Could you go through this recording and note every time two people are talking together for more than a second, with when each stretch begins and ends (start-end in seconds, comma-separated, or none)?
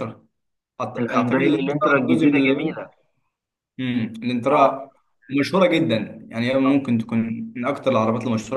1.0-2.9